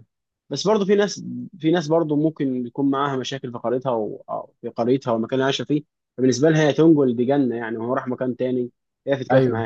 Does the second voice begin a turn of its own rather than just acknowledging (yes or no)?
no